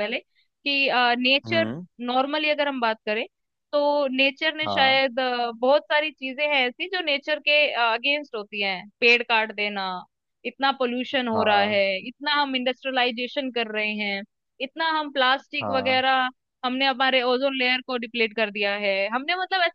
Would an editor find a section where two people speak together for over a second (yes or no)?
no